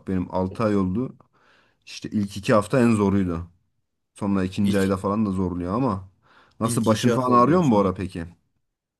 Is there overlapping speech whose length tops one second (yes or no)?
yes